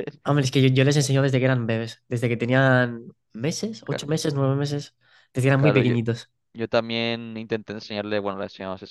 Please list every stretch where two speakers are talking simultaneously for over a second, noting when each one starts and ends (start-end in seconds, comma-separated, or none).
none